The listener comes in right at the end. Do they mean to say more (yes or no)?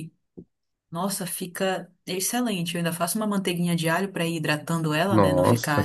yes